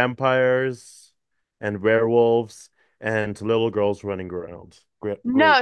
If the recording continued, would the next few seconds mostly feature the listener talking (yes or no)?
yes